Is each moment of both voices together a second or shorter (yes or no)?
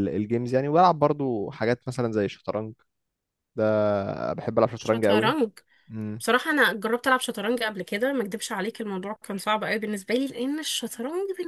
yes